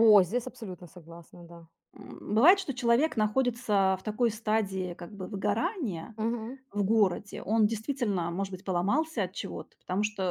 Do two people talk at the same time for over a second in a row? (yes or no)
no